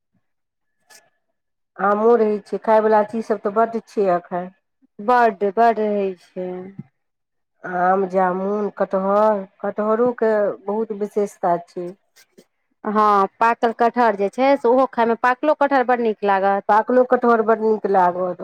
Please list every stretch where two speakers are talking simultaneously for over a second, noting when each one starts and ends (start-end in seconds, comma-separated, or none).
none